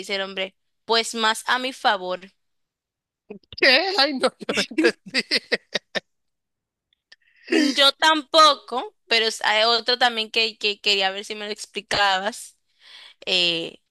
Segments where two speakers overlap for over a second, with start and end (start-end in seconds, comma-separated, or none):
none